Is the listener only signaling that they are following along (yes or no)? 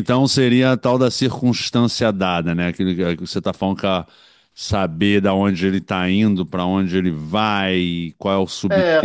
no